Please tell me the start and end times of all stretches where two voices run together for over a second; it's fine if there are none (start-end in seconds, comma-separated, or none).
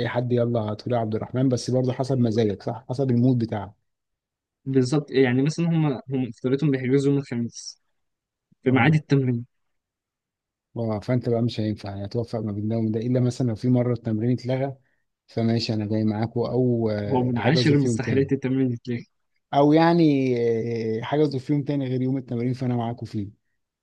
17.1-18.3